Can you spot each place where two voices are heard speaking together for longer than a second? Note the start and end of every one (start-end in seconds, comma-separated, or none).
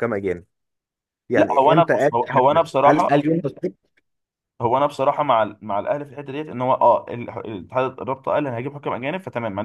1.4-3.3